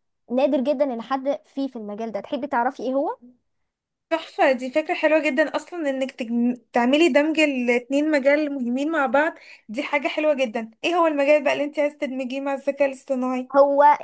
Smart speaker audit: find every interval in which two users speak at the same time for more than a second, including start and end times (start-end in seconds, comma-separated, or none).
none